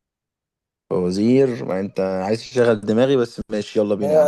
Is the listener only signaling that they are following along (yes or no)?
no